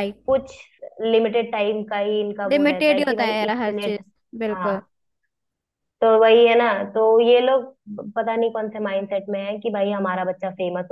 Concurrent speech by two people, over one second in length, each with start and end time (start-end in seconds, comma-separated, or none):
2.5-3.9